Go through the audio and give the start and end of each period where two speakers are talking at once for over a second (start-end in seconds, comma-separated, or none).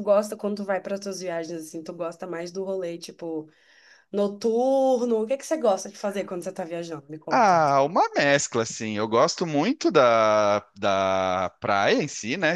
none